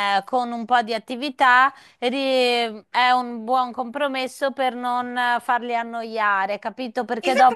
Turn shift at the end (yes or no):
yes